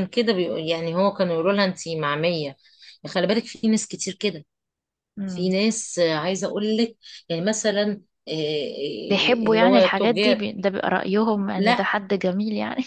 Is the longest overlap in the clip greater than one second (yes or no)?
yes